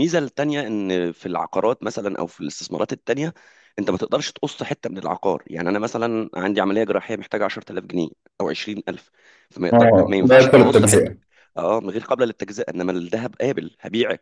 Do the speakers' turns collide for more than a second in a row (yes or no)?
yes